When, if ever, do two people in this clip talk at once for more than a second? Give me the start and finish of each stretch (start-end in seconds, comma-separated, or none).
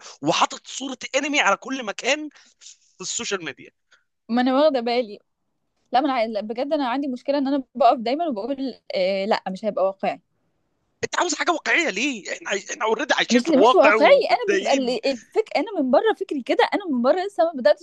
13.3-15.0